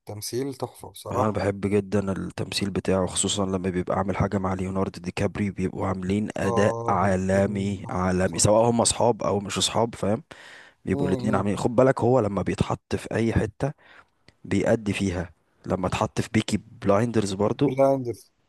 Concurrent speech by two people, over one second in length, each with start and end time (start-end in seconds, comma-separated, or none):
6.4-8.6